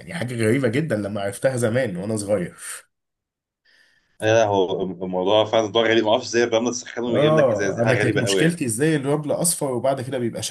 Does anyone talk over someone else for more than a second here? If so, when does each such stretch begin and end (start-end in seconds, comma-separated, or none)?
7.1-8.6